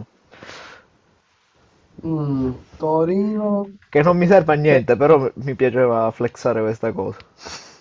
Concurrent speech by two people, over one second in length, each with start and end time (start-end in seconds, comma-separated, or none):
none